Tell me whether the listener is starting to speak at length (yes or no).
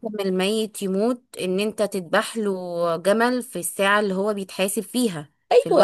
yes